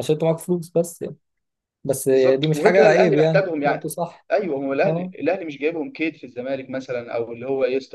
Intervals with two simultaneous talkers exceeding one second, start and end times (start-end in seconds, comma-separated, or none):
2.1-3.8